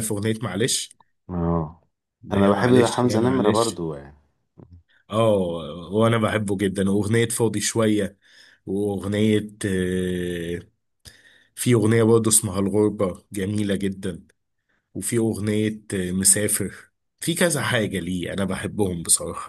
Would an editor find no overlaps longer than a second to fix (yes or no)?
no